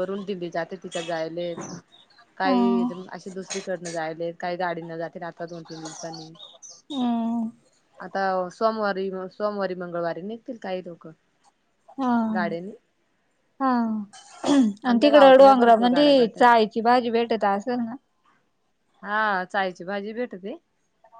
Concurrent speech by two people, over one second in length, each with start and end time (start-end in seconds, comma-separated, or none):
14.9-16.4